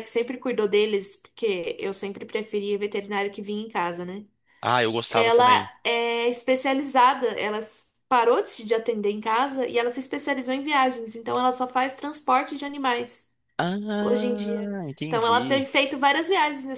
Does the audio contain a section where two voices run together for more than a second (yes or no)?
yes